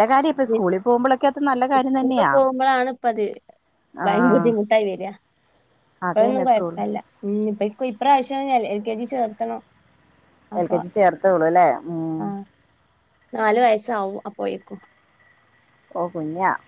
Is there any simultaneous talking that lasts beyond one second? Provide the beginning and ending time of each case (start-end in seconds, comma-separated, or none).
none